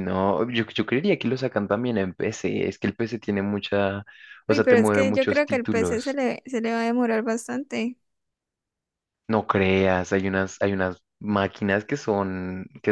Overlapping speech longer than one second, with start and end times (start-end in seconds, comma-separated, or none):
4.5-6.2